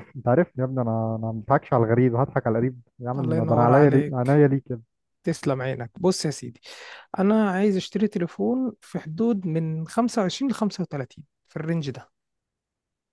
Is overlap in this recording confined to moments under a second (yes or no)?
no